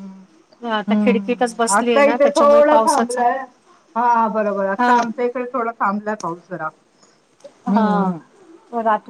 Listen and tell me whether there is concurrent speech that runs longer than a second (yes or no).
yes